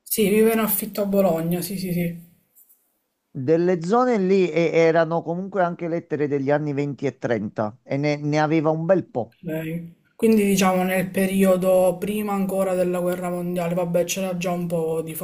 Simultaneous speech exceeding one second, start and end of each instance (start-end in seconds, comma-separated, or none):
none